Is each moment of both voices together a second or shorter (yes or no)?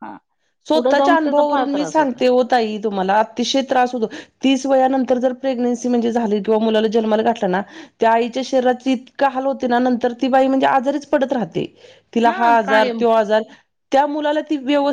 no